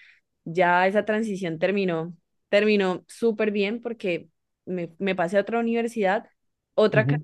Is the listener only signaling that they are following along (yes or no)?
yes